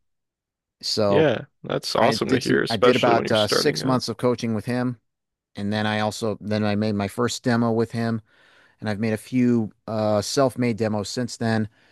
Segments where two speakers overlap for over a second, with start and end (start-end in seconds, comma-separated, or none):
2.0-4.0